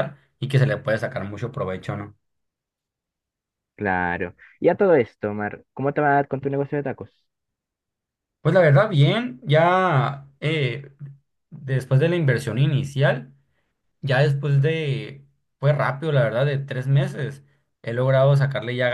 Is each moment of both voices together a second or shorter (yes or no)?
yes